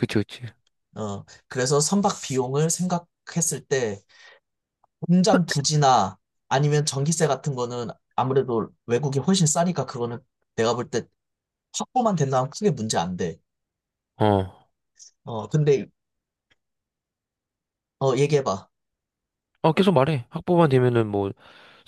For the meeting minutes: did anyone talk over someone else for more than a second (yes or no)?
no